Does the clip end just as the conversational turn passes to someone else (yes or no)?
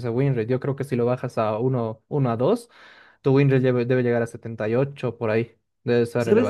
yes